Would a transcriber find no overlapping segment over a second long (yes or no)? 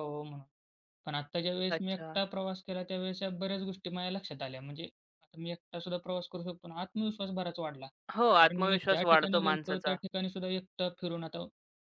no